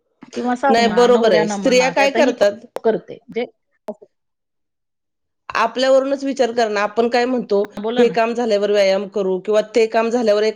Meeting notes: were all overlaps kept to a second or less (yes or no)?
no